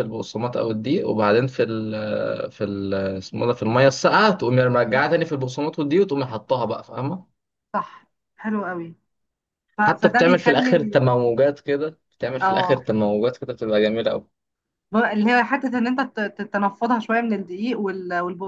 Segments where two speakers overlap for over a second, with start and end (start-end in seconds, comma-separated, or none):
9.8-11.0